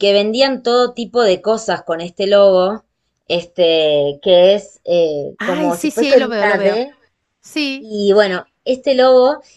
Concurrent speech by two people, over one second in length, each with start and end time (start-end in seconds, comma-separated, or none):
5.4-6.8